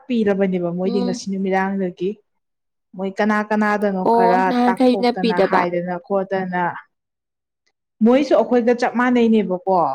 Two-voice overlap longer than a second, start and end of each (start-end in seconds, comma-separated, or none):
4.1-5.6